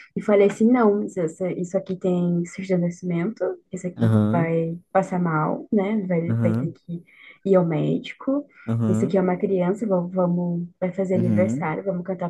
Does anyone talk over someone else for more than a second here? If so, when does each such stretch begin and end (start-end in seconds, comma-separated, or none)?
none